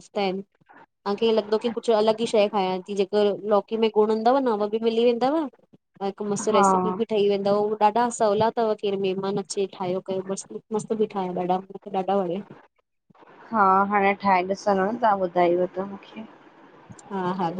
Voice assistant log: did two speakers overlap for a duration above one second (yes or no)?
no